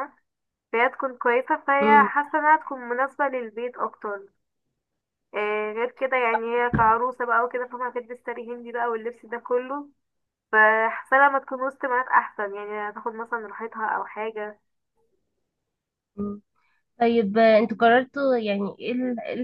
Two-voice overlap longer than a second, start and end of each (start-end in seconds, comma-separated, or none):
none